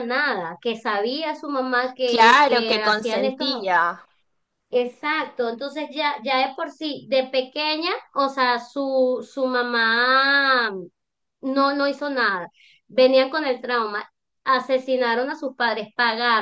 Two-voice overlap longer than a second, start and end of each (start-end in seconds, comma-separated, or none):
2.1-3.5